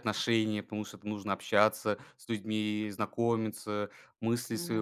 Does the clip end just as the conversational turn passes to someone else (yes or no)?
no